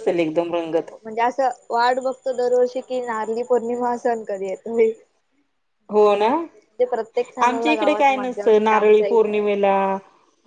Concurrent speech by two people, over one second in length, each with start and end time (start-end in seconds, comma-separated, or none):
7.5-9.4